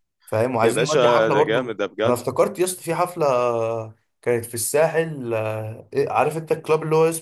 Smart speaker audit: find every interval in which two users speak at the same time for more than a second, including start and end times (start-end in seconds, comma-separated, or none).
0.6-2.2